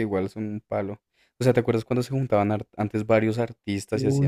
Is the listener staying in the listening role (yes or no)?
no